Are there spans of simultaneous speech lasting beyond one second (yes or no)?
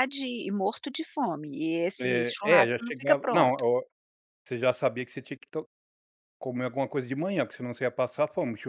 yes